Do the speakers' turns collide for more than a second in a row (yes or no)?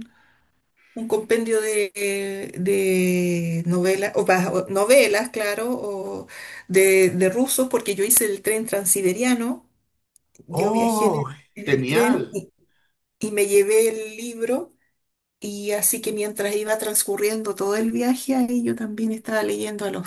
yes